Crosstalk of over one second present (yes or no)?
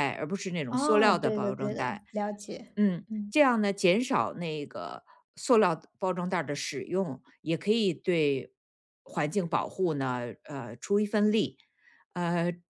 yes